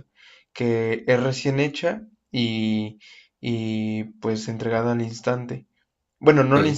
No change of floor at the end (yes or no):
yes